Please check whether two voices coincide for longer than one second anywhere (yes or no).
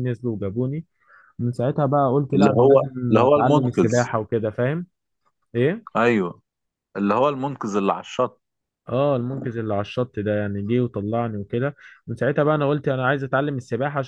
yes